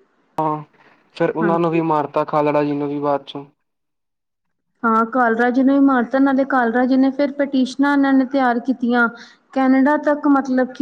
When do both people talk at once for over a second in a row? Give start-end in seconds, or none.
none